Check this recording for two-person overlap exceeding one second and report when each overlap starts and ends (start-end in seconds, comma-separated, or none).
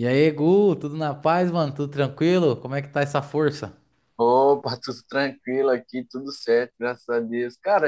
none